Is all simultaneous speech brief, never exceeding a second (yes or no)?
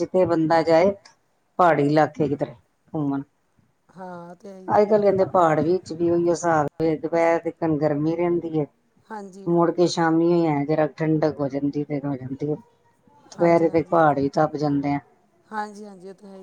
yes